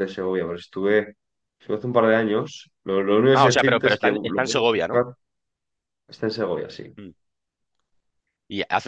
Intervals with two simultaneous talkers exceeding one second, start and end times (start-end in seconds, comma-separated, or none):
3.3-5.0